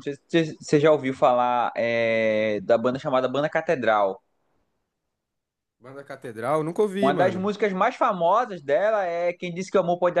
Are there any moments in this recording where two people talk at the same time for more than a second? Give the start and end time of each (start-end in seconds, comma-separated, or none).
none